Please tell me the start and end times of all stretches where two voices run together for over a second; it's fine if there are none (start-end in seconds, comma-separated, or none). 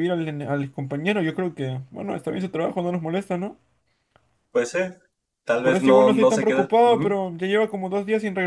5.6-7.2